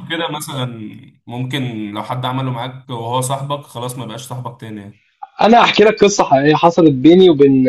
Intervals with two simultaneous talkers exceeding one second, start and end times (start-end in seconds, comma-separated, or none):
none